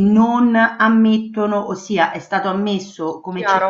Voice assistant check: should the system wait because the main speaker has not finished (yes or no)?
yes